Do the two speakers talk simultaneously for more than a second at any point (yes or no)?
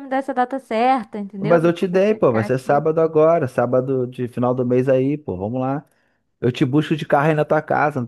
yes